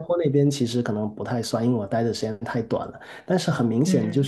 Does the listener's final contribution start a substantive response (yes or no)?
no